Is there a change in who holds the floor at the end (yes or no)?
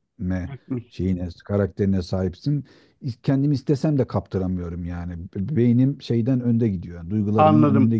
yes